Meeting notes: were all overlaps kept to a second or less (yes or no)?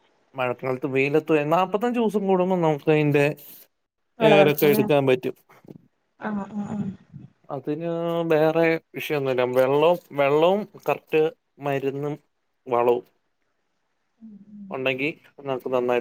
yes